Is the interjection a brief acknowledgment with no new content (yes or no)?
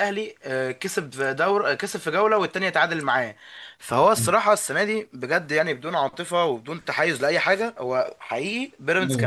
yes